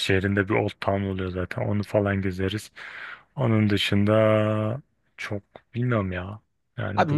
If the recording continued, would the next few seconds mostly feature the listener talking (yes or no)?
yes